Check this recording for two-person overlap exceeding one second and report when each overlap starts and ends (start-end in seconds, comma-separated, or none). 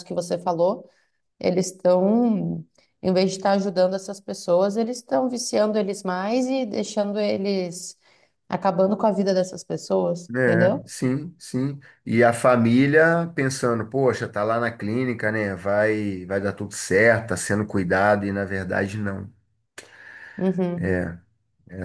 none